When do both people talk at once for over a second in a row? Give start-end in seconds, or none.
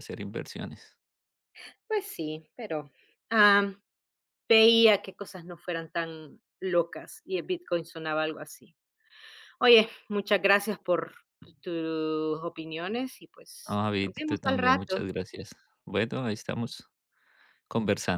13.7-15.0